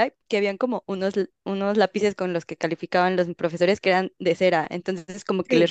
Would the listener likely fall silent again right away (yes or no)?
yes